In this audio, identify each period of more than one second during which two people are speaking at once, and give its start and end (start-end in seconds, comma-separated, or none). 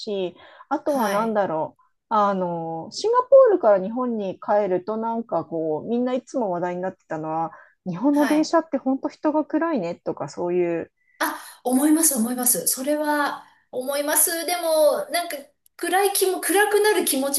none